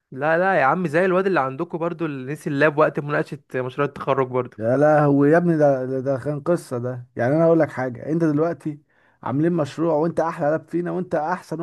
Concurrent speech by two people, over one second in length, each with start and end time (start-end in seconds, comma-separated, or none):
none